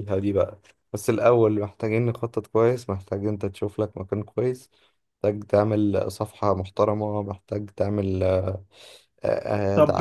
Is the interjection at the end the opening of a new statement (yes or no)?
yes